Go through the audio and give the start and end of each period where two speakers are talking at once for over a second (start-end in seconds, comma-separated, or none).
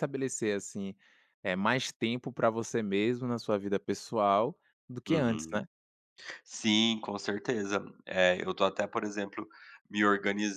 none